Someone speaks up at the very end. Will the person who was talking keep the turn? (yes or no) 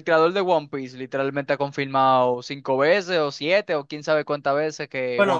no